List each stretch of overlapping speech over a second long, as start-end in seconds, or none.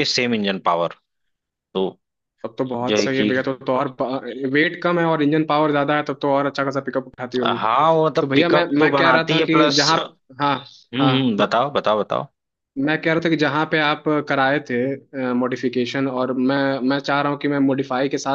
8.2-10.0